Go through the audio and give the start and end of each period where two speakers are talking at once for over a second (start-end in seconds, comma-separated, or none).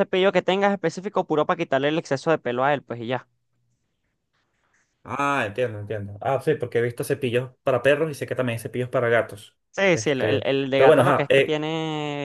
9.7-11.7